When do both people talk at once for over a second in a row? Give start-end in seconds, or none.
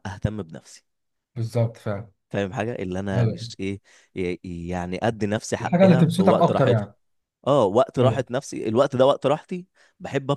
5.6-6.9